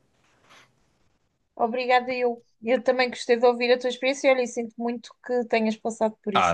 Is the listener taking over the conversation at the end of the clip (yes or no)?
yes